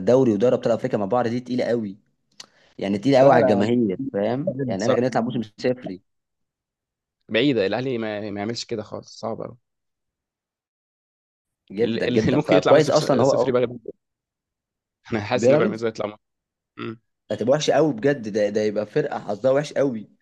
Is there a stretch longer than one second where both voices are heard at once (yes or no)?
yes